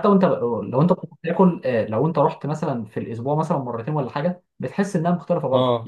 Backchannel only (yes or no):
yes